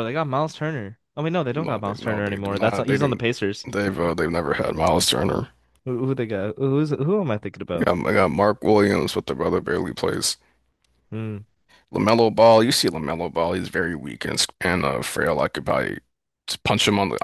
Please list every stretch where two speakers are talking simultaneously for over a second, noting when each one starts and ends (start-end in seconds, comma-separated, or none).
1.5-3.2